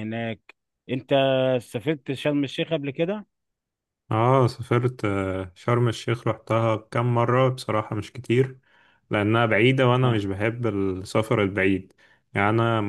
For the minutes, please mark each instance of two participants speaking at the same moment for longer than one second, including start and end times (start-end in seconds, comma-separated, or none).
none